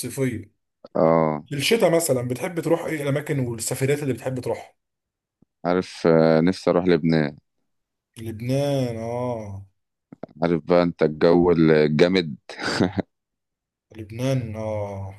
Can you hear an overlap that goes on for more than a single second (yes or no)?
no